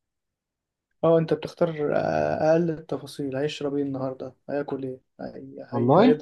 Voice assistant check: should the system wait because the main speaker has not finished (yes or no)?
yes